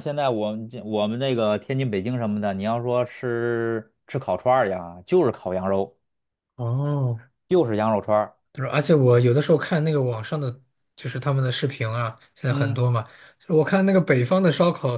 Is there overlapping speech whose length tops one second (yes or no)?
no